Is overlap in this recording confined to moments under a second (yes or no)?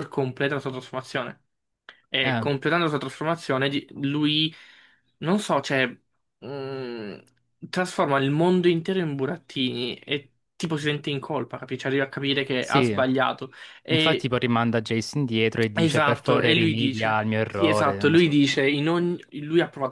no